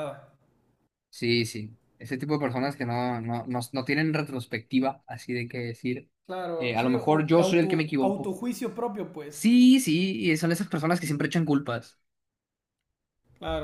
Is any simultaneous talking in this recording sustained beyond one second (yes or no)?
yes